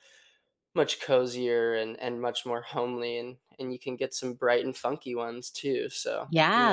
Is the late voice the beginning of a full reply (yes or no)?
yes